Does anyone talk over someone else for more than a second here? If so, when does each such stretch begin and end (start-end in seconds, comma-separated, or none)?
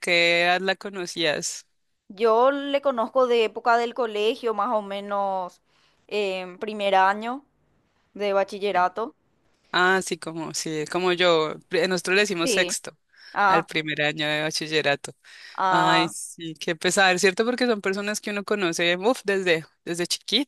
none